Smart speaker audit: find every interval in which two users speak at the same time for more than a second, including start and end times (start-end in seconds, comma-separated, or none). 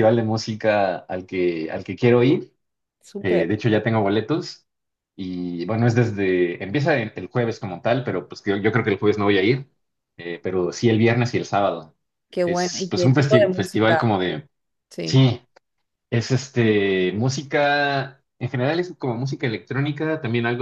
12.4-14.0